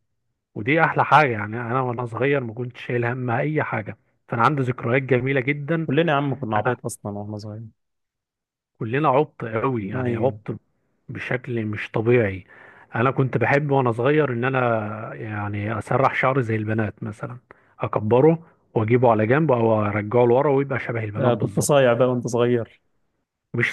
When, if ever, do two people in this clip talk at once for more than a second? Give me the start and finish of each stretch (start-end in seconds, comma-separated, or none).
none